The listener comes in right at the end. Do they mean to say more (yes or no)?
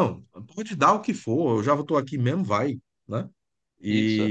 no